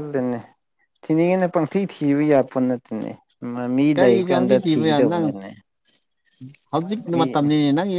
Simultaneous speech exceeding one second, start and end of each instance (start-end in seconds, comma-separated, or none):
4.0-5.3